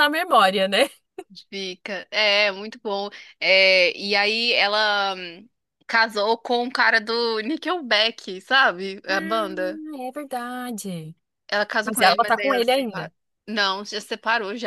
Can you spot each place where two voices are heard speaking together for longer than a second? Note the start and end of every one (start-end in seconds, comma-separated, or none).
11.8-13.1